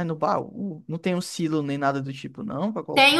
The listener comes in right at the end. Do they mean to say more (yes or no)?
yes